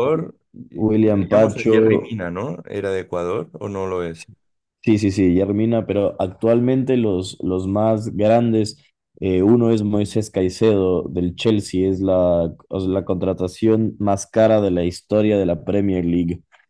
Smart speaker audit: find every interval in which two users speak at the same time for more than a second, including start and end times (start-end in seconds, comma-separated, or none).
0.7-2.2